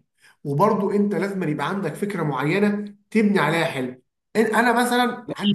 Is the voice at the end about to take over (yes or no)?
yes